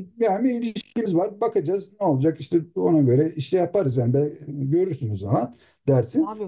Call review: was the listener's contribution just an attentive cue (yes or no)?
no